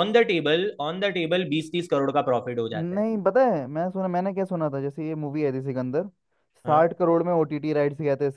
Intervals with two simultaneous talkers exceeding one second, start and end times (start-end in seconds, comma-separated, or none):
none